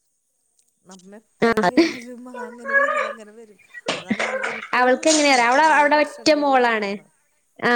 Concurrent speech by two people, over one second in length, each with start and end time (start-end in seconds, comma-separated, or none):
4.8-6.9